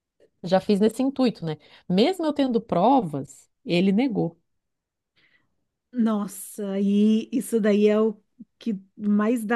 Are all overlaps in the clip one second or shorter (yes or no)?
yes